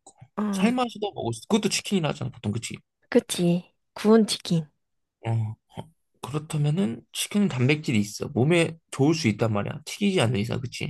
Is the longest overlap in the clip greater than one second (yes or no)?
no